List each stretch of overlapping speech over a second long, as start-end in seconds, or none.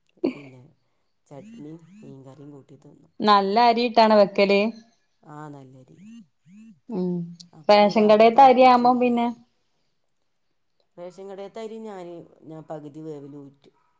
7.7-9.3